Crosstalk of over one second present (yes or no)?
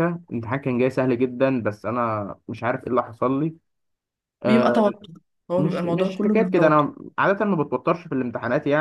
yes